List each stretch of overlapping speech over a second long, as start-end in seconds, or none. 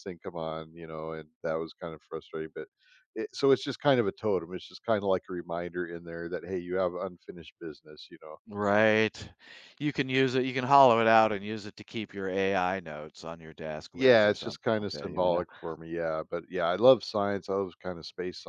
13.9-15.4